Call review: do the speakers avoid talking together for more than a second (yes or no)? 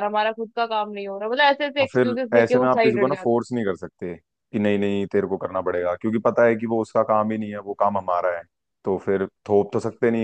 no